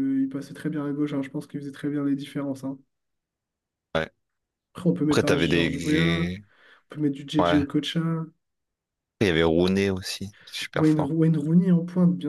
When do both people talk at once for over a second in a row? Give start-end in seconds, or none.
5.1-6.4